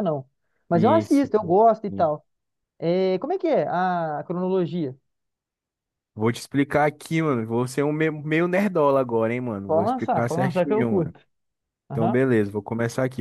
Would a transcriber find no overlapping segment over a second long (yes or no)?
no